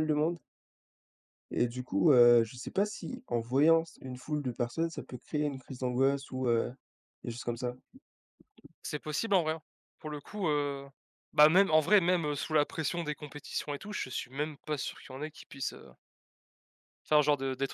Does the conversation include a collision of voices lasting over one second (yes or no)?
no